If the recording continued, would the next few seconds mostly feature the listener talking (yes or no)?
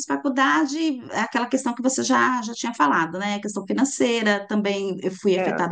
no